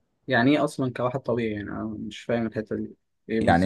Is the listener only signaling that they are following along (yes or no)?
no